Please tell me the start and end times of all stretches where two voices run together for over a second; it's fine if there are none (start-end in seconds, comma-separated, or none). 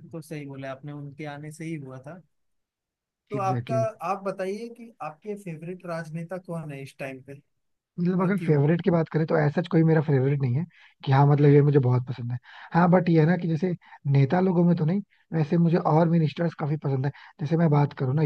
none